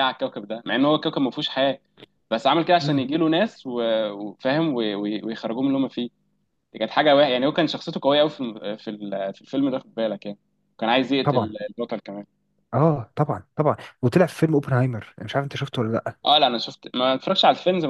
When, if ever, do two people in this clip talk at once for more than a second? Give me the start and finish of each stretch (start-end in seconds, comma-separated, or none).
none